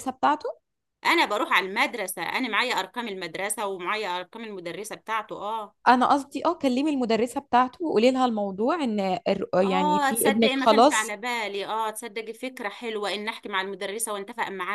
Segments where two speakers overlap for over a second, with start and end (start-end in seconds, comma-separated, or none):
9.6-11.2